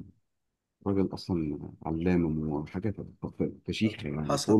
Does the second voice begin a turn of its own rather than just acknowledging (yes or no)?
yes